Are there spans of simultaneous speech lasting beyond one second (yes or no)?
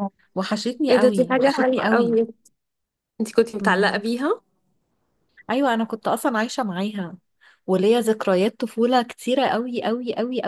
yes